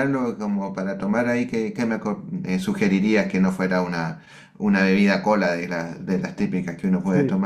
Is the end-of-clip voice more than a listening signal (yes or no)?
yes